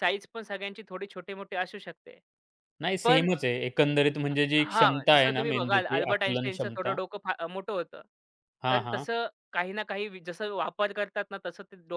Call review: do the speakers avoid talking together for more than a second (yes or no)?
no